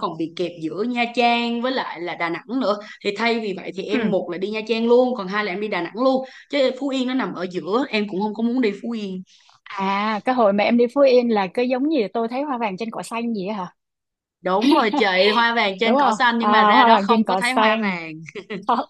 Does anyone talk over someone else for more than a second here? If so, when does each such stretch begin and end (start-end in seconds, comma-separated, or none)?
15.8-18.0